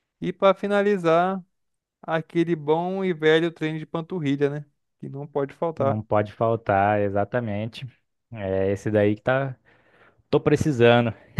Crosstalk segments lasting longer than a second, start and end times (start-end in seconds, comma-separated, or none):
none